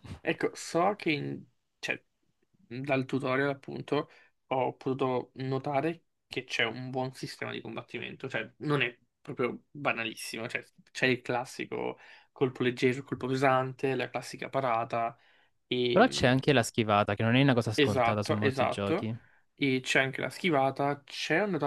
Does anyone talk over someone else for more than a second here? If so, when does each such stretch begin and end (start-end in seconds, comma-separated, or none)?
17.7-19.1